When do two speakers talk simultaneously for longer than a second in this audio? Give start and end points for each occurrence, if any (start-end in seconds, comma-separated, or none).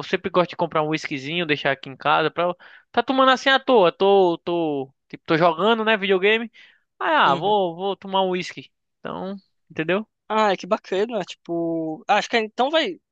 none